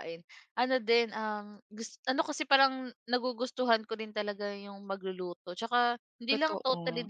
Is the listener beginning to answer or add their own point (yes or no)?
no